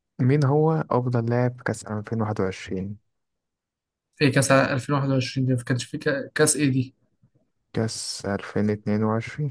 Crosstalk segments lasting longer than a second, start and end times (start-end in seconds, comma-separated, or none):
none